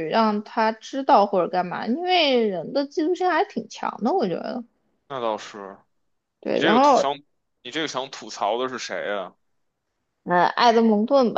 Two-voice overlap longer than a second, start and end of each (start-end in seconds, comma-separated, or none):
none